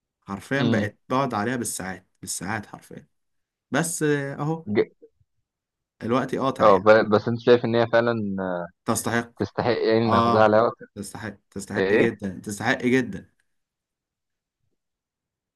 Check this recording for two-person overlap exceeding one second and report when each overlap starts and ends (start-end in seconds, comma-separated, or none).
none